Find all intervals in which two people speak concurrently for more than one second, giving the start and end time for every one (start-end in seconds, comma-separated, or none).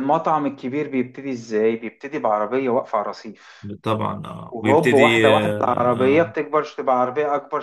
4.5-6.3